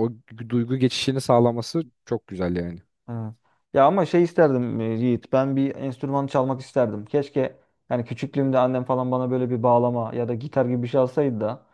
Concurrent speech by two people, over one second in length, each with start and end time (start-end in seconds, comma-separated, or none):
none